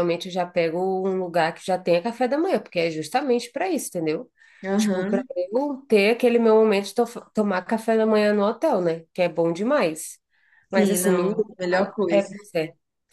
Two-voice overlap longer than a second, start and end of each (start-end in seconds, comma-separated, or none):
10.7-12.3